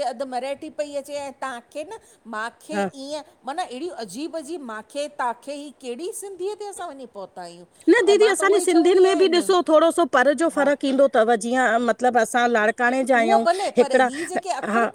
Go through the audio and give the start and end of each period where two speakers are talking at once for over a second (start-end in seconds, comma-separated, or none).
8.1-9.5